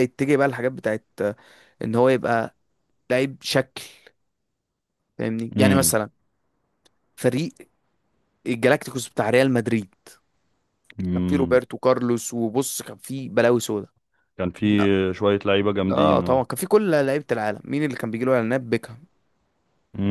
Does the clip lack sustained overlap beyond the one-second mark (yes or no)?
yes